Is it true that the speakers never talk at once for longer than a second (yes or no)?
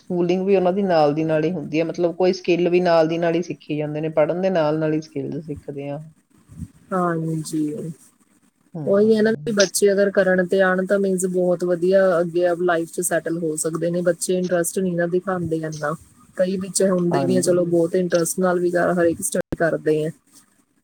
yes